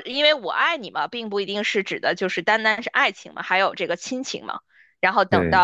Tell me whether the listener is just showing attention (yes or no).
yes